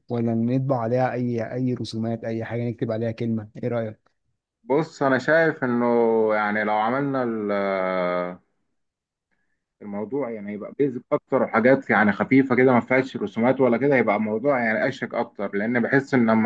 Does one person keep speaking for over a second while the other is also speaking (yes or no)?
no